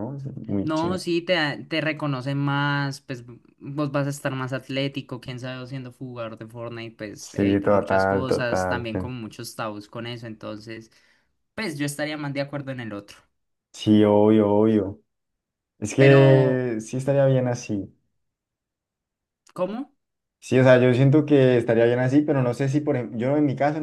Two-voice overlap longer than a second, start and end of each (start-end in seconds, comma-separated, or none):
7.2-8.9